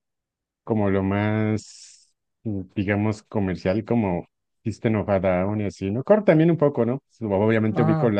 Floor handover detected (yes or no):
no